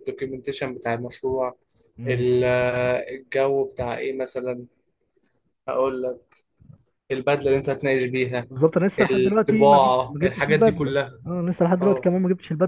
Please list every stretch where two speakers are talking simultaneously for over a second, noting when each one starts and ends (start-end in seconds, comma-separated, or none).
9.0-11.2